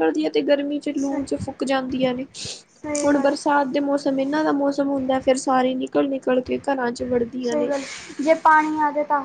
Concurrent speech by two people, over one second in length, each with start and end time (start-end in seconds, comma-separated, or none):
none